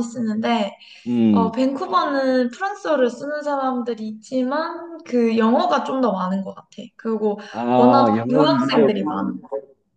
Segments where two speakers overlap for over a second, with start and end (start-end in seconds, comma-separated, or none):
7.8-9.2